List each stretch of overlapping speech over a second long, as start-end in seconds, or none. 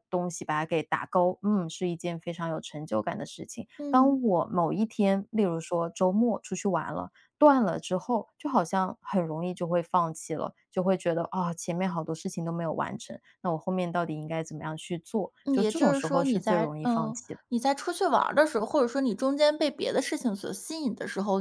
15.4-17.4